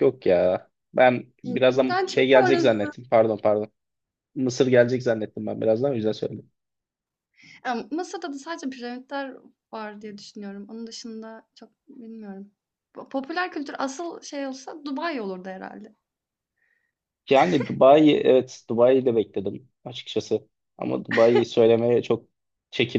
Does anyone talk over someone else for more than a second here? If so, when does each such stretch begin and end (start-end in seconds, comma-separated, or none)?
1.4-2.8